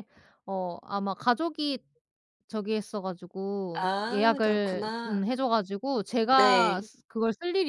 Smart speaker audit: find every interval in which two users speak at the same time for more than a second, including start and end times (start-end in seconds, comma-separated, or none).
3.7-5.3